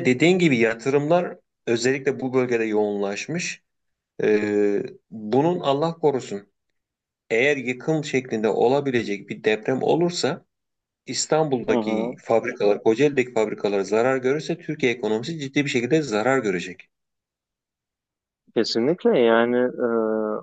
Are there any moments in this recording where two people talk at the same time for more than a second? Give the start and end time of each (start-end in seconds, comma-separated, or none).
none